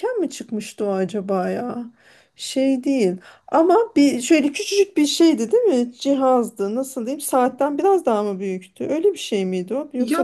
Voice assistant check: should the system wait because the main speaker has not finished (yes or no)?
no